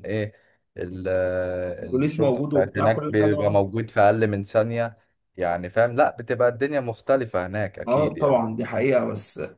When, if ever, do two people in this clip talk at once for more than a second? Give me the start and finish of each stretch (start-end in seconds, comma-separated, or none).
1.8-3.6